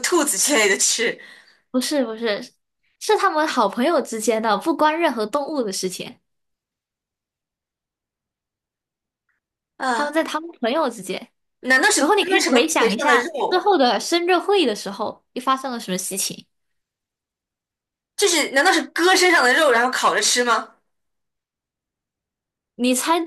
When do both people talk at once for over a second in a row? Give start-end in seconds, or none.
12.0-13.6